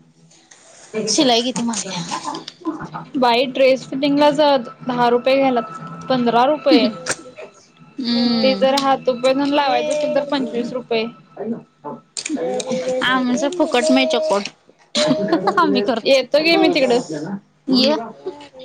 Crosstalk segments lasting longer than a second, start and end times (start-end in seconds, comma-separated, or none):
none